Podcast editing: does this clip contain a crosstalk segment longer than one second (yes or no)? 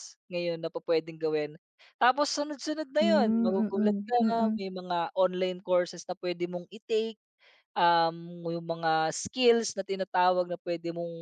yes